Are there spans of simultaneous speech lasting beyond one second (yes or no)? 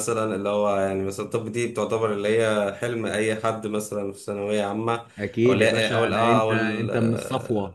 yes